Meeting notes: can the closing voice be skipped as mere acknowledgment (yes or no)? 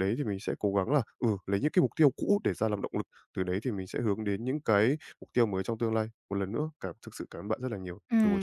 no